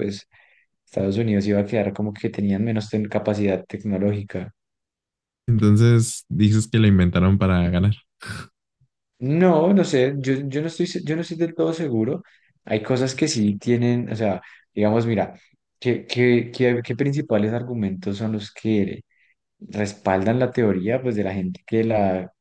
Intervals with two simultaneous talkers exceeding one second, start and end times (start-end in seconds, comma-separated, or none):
none